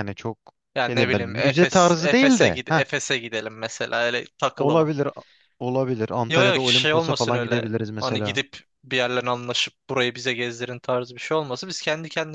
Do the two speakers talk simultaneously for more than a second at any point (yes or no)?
yes